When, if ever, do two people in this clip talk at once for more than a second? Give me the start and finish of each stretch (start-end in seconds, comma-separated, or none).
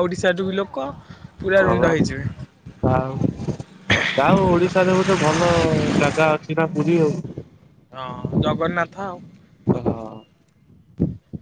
none